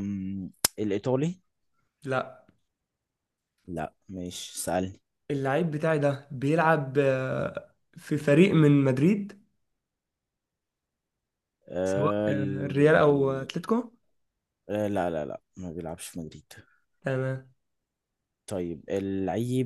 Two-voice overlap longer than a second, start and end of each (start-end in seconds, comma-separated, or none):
11.8-13.5